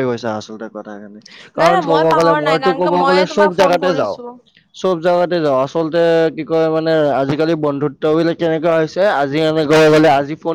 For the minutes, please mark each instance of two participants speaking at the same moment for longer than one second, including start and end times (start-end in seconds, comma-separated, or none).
1.6-4.2